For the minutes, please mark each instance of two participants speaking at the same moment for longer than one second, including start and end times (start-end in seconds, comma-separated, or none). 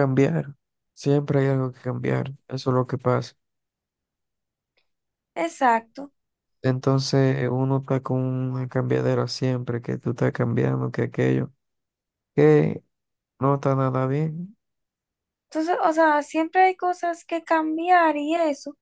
none